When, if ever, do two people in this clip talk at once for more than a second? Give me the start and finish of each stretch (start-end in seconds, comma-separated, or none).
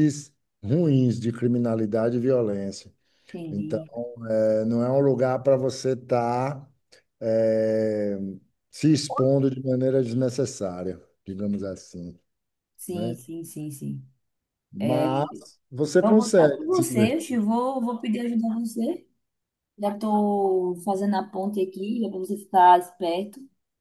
16.0-17.4